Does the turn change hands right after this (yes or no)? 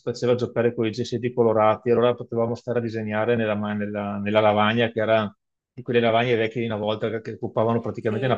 yes